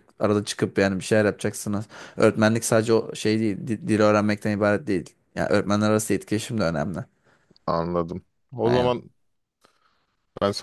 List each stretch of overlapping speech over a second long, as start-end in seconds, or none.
none